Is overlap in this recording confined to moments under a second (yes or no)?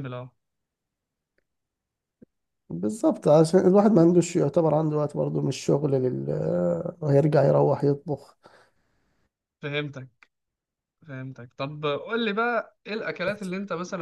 yes